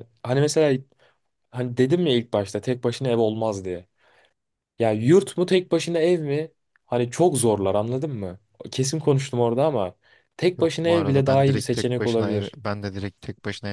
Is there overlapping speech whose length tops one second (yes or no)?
yes